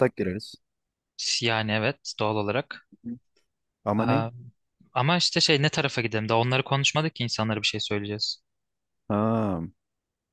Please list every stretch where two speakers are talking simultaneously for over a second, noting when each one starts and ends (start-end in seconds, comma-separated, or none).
none